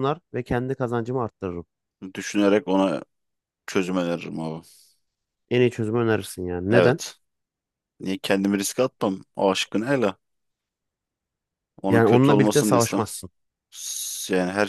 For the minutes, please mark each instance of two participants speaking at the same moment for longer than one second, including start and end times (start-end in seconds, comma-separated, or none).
11.9-13.1